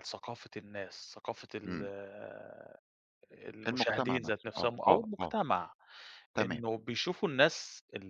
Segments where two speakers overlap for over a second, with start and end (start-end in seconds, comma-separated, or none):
3.7-5.3